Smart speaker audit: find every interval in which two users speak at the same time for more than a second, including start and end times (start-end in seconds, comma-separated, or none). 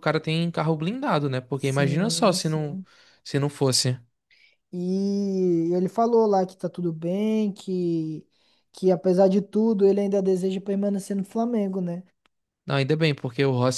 1.6-2.8